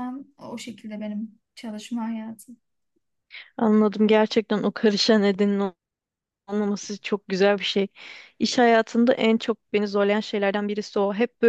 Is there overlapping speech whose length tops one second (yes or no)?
no